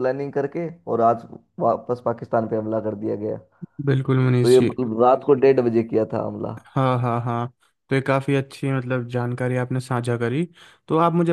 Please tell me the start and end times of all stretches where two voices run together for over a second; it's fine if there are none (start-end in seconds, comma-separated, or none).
none